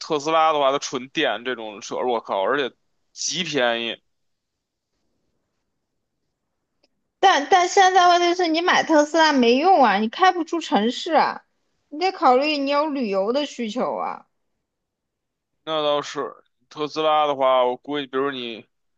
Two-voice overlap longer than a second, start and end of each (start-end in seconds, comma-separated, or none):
none